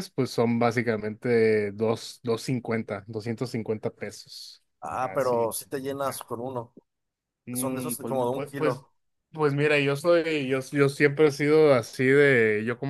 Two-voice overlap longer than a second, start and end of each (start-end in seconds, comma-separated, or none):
7.5-8.8